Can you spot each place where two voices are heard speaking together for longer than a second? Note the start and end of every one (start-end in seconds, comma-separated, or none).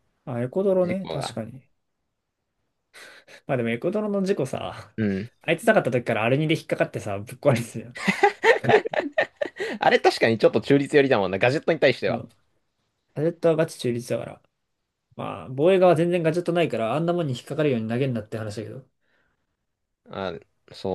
none